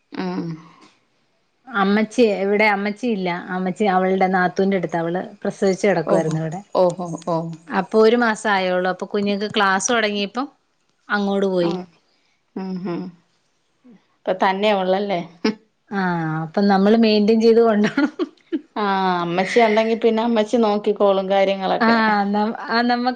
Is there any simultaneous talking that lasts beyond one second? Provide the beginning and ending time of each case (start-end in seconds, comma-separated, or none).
none